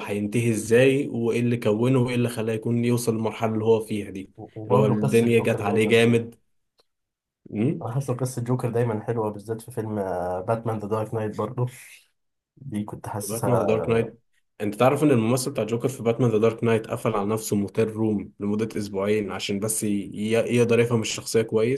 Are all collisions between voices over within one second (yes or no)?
no